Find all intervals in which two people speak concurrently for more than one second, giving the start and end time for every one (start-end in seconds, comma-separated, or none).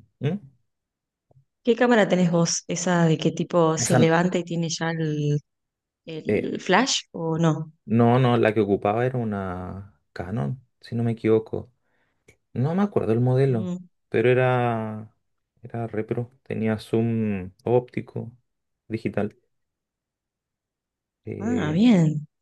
none